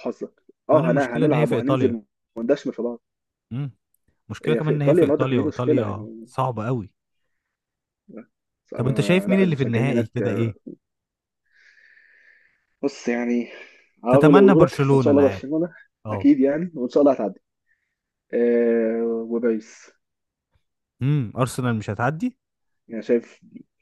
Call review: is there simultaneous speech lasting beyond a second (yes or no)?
yes